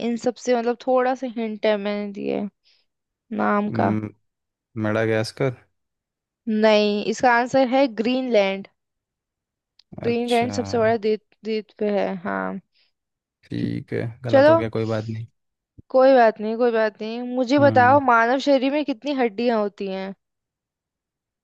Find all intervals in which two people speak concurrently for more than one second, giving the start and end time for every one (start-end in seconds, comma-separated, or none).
none